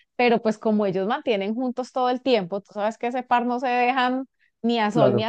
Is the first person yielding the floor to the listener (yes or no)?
yes